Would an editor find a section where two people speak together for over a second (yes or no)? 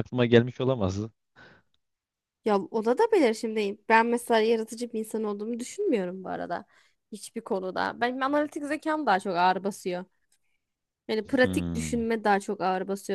no